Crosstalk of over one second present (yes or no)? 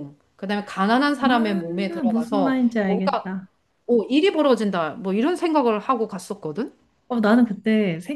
yes